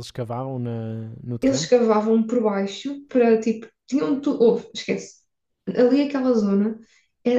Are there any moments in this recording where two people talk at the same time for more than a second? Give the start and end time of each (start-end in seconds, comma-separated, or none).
none